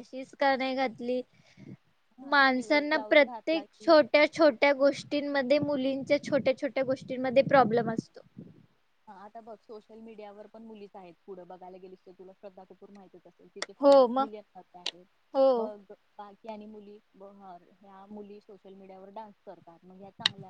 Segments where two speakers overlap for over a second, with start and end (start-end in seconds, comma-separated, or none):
2.3-3.9